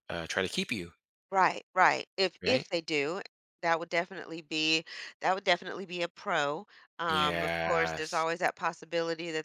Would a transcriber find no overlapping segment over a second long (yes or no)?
no